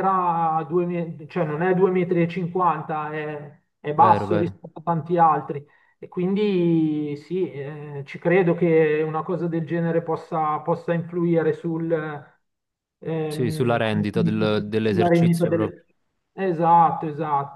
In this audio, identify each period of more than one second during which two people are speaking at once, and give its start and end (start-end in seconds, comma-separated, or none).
13.3-15.8